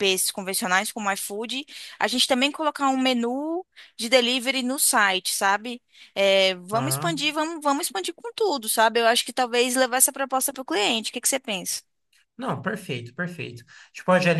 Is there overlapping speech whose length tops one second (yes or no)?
no